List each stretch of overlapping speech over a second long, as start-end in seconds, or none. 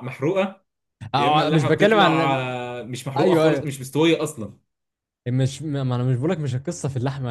1.1-2.4